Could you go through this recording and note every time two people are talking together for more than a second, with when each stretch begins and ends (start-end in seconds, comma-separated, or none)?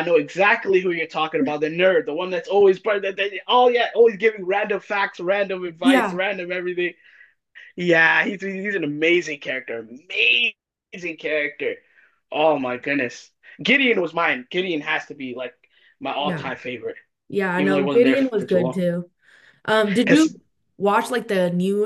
17.6-18.8